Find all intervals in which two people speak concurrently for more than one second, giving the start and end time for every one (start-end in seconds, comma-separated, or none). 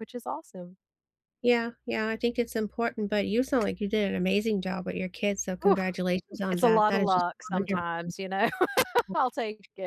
6.5-7.8